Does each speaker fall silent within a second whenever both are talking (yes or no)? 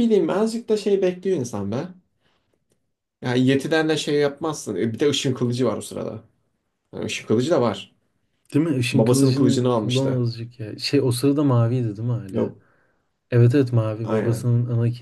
no